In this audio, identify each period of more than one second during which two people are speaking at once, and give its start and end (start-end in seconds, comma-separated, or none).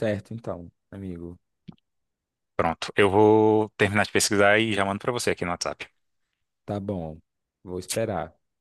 none